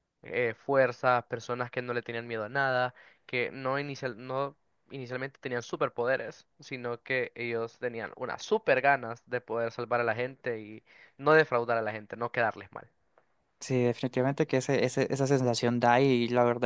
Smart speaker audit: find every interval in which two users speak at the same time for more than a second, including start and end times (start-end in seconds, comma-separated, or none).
none